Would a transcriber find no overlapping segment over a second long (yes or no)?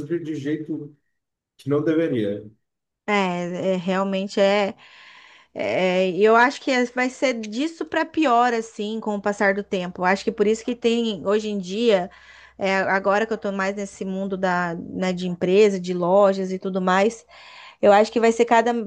yes